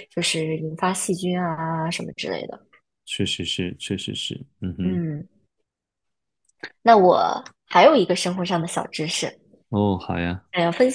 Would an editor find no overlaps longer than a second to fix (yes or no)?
yes